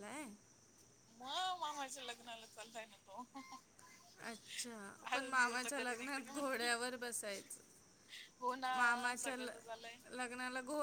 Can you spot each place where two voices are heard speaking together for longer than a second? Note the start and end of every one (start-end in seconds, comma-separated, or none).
5.1-6.7